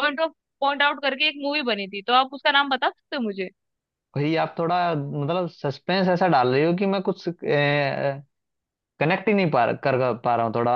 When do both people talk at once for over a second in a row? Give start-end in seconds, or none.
none